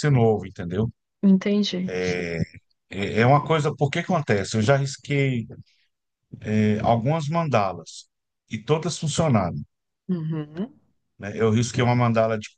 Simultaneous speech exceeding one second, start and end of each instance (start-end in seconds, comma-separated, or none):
none